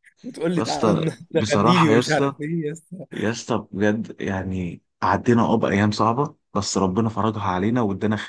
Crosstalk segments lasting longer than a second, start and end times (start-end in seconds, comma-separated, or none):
0.6-2.3